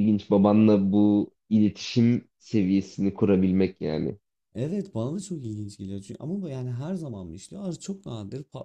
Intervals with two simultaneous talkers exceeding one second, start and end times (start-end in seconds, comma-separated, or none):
none